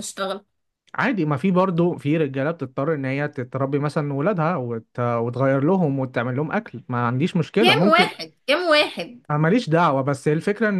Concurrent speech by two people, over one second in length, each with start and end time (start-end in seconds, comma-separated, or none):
none